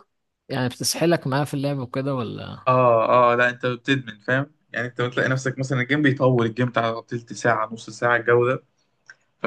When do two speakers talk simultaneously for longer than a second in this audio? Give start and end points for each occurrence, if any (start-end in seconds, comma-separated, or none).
none